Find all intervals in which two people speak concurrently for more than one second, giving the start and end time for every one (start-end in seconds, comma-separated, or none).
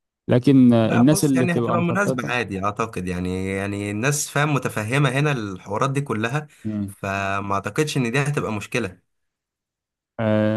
0.8-2.3